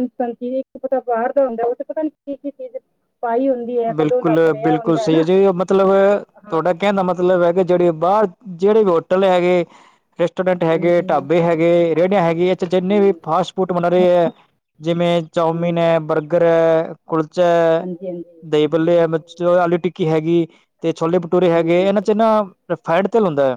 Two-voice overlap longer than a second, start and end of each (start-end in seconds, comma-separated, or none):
none